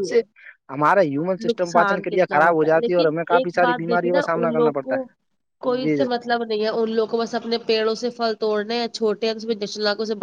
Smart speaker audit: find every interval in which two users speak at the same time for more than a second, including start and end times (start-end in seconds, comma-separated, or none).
1.5-4.9